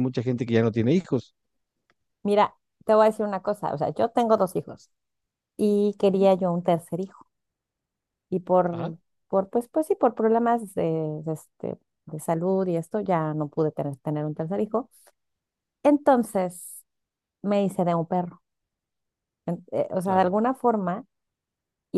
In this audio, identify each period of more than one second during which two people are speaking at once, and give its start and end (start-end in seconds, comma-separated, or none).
none